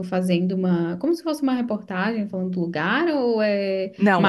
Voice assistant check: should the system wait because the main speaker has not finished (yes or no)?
no